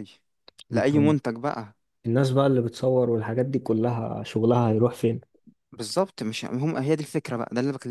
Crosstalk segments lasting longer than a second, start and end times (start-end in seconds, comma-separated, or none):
none